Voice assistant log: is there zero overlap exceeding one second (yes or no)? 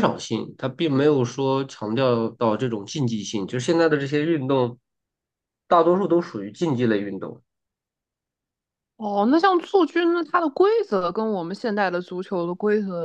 yes